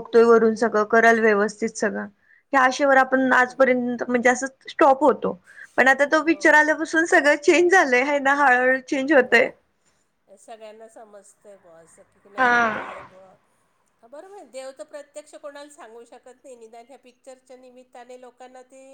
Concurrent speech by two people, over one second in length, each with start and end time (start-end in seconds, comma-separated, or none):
none